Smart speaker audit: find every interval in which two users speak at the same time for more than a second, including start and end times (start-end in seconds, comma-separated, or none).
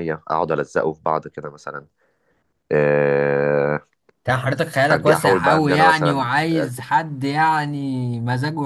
4.9-6.3